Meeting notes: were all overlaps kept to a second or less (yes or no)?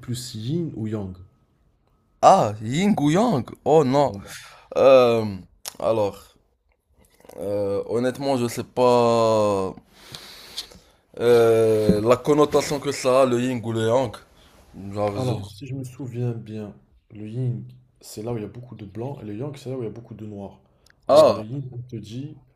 yes